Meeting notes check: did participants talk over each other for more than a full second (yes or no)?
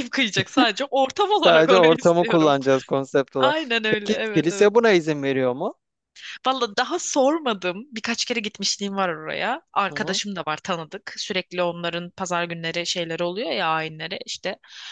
yes